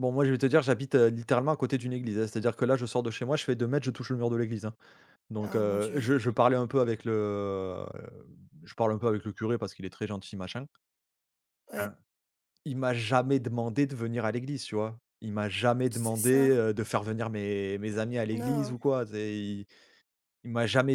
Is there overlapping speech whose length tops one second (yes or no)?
no